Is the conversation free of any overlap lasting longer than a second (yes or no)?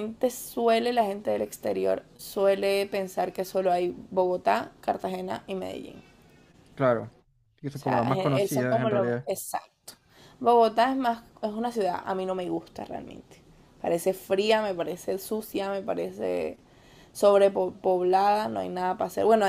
no